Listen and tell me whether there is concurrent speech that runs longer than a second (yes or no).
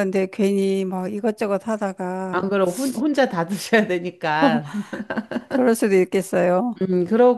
no